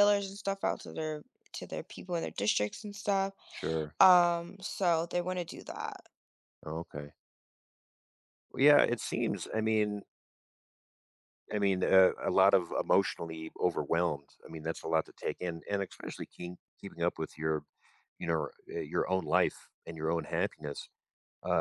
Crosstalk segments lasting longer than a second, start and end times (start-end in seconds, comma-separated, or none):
none